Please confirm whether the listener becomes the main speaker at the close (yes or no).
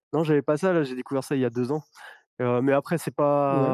no